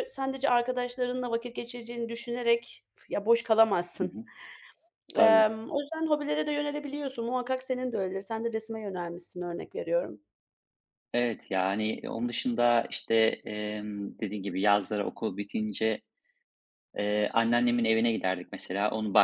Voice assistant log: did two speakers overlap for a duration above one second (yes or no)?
no